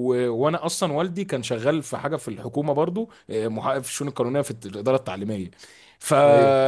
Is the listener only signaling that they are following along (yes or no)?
yes